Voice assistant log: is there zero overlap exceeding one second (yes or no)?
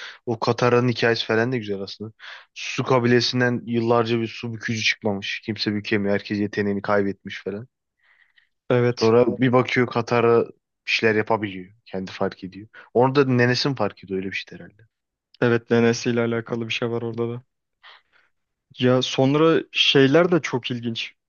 yes